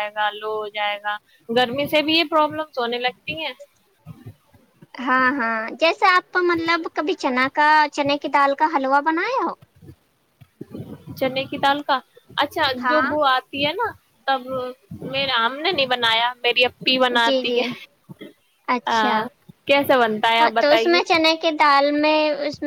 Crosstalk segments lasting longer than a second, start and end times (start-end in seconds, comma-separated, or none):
none